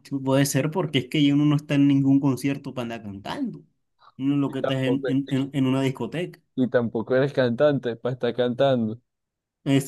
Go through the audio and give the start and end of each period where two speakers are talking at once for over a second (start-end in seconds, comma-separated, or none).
none